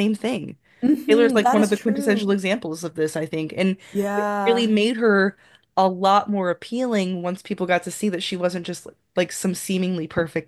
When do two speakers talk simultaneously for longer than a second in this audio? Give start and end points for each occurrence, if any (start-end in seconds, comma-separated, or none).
1.1-2.4